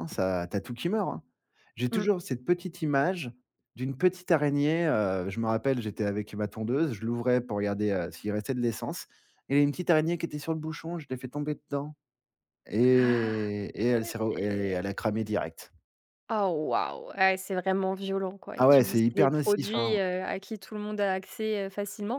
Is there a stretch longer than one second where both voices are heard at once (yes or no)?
yes